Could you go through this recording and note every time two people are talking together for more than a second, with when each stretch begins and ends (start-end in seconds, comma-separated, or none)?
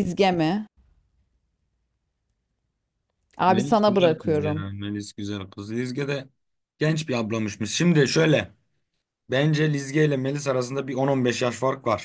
3.5-4.7